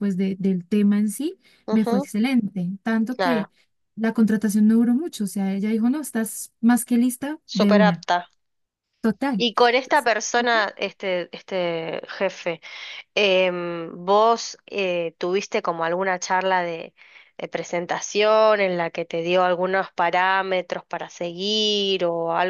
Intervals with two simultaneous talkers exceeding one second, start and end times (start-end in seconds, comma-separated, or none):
none